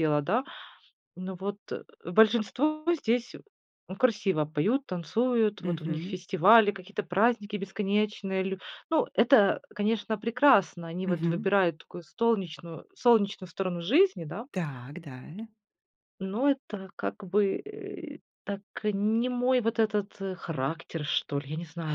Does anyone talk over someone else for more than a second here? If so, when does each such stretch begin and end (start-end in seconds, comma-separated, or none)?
none